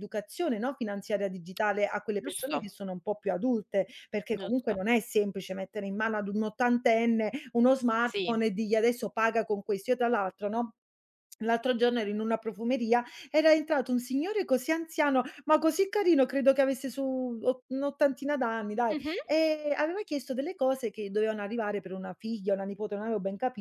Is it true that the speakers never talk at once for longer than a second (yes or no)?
yes